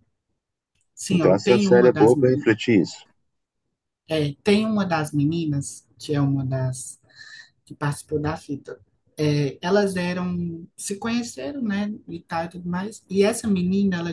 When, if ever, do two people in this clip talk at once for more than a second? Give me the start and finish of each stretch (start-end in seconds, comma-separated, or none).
1.1-2.5